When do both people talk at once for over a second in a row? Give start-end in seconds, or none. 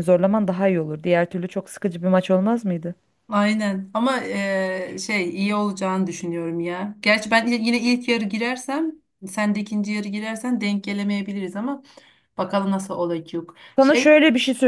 none